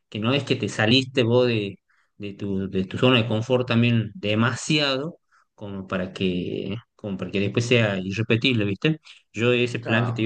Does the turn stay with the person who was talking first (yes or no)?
yes